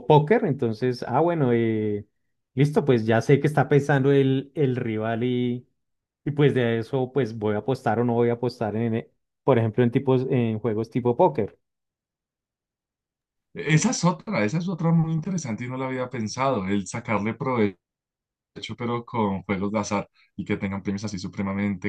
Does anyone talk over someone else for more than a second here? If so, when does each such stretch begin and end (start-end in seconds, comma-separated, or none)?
none